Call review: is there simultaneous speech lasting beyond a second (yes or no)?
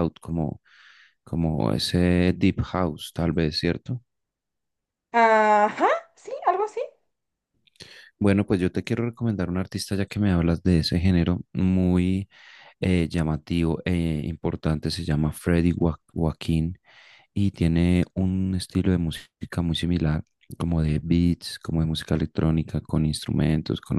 no